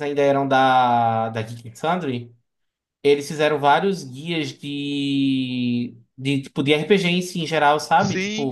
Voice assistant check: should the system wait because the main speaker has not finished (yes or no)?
yes